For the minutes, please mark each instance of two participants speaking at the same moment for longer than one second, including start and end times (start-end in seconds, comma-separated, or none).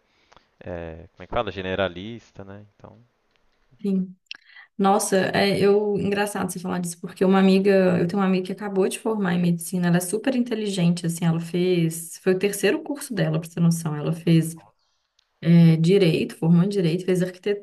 none